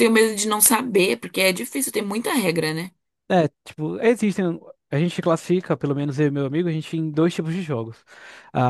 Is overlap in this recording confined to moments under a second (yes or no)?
yes